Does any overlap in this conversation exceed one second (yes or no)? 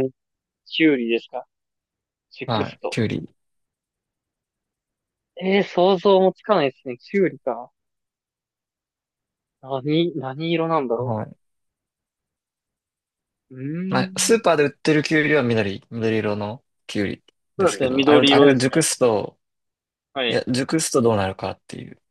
yes